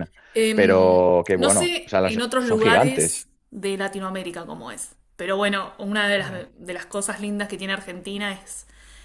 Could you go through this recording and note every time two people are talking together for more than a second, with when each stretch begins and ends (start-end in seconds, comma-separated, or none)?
0.5-3.3